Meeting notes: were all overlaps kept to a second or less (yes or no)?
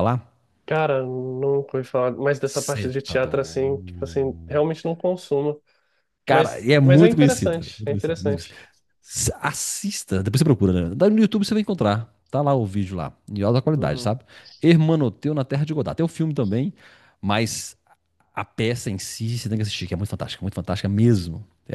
no